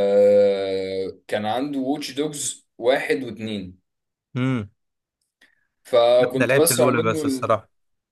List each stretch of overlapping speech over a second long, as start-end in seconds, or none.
6.3-7.6